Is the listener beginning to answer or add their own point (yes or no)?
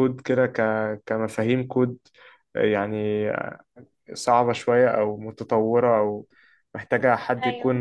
no